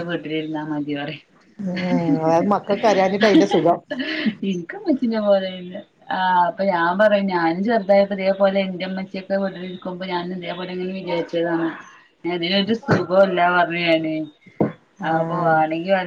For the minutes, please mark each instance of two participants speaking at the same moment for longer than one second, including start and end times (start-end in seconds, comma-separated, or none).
none